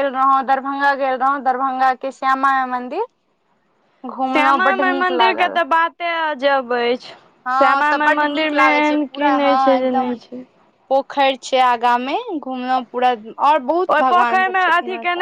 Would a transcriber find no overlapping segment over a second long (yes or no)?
no